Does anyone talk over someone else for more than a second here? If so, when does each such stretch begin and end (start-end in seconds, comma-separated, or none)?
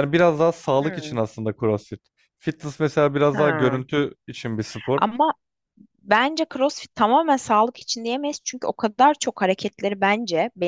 none